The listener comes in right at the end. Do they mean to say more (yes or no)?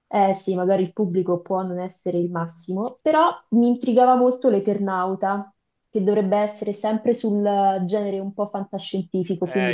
yes